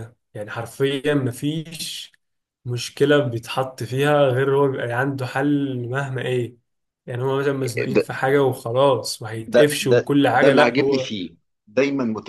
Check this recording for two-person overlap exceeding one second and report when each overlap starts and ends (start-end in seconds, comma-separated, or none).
9.5-11.1